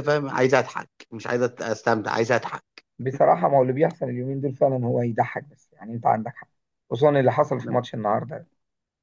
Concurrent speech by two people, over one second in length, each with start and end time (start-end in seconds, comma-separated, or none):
none